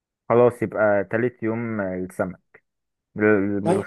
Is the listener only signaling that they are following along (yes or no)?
yes